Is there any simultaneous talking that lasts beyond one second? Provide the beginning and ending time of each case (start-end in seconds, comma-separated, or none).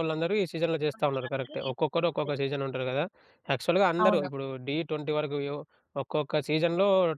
0.9-2.3